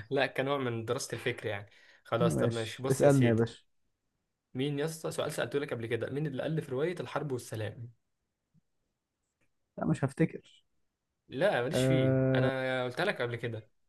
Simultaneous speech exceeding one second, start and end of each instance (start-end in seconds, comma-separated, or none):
2.2-3.5